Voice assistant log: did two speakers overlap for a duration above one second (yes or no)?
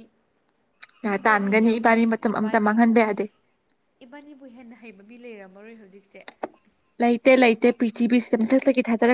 yes